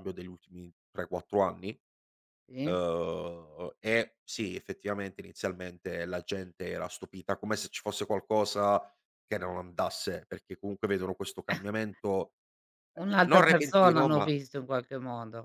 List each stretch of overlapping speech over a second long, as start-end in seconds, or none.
13.0-14.3